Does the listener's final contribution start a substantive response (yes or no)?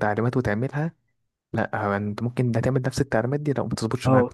yes